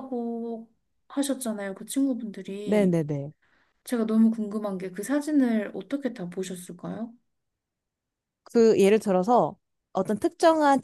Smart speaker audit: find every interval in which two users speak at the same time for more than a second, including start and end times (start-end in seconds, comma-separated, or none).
none